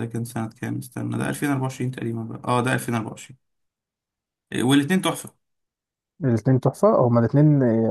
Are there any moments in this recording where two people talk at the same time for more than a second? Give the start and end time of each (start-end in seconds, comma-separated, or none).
none